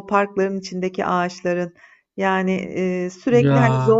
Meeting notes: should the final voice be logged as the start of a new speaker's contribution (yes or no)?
no